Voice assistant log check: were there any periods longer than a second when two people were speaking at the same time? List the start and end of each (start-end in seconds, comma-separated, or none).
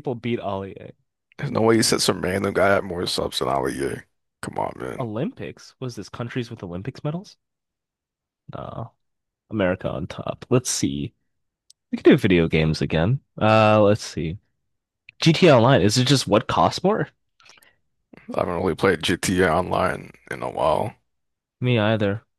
none